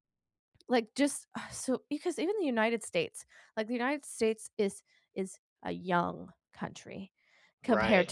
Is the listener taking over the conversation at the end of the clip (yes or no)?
no